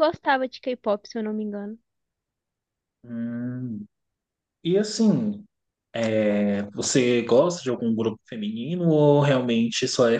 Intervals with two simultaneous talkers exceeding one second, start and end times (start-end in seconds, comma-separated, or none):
none